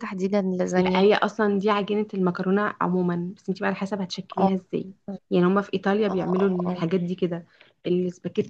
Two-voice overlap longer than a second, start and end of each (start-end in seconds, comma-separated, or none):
none